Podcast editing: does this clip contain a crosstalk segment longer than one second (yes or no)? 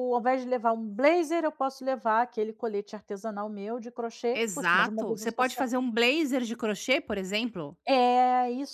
yes